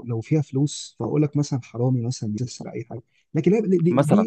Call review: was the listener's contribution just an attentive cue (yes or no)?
yes